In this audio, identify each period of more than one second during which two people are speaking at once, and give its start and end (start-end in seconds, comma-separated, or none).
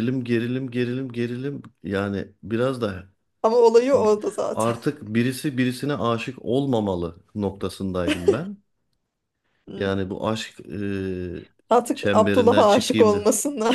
11.7-13.2